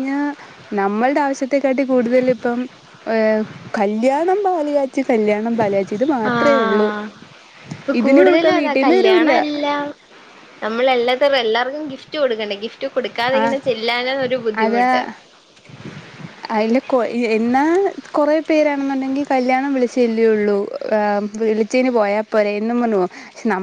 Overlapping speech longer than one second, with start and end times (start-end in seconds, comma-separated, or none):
8.0-9.3